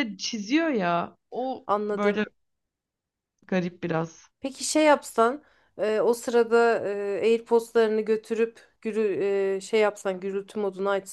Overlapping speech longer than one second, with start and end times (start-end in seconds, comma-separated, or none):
none